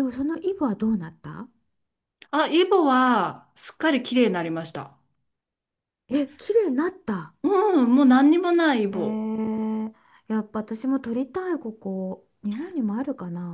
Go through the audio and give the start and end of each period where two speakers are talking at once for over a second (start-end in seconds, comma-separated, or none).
none